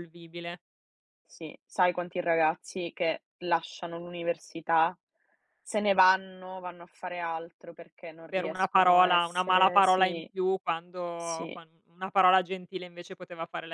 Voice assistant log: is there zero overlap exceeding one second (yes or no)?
no